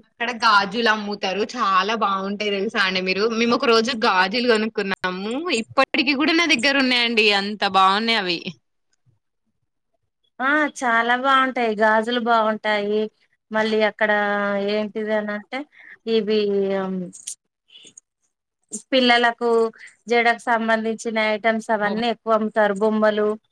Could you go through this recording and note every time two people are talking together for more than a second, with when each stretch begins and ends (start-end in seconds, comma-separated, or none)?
none